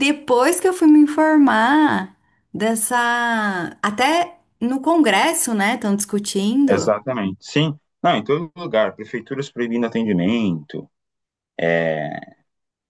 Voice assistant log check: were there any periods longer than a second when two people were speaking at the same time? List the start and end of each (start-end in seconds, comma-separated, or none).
none